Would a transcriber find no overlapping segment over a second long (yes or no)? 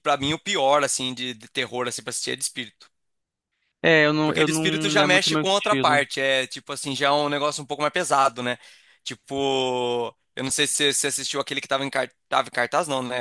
no